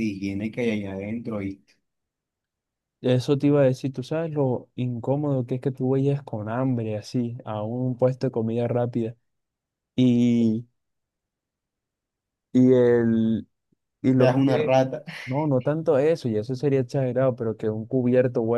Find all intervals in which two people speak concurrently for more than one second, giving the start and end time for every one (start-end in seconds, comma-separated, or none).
none